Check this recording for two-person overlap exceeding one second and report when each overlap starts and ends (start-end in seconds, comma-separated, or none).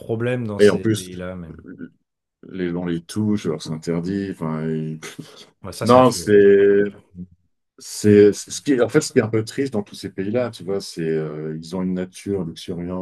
none